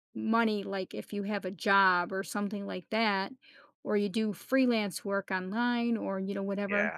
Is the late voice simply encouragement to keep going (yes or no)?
yes